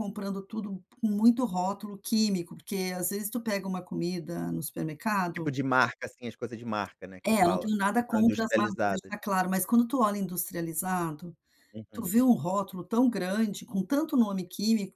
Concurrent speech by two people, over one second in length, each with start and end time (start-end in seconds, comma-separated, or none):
7.2-9.1